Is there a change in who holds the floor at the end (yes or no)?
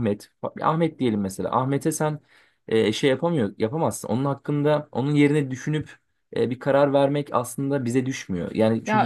yes